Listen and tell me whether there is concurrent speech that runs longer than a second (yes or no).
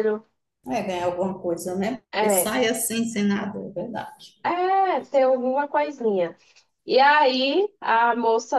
no